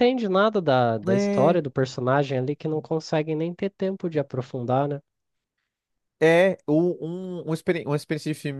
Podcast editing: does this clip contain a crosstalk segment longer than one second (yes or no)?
no